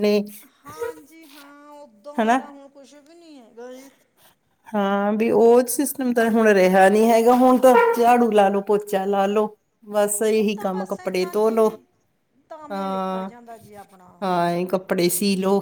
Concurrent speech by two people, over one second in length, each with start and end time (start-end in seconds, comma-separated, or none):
10.4-11.7